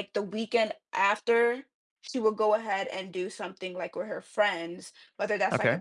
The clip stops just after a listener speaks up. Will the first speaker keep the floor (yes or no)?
yes